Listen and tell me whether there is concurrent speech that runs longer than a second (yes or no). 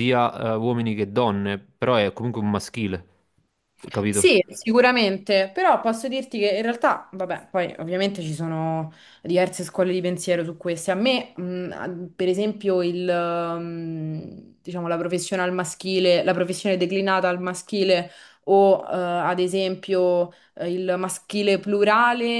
no